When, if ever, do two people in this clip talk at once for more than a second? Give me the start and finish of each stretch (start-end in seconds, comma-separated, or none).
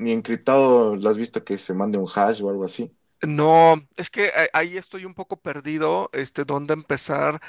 none